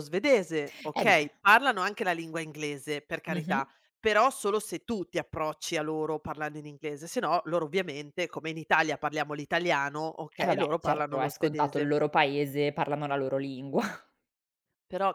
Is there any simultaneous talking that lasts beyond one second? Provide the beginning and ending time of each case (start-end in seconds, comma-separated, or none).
10.4-11.9